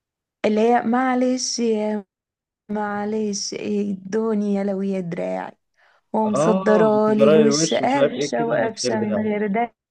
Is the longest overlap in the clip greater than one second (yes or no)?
yes